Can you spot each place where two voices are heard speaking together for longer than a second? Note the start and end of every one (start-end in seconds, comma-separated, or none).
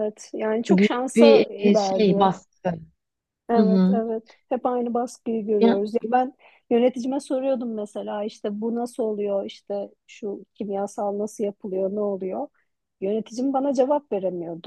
0.7-2.3